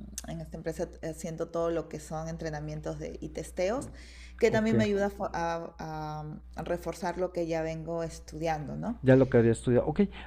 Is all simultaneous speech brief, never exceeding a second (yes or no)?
yes